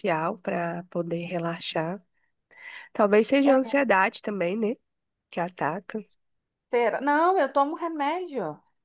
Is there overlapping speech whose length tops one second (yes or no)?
no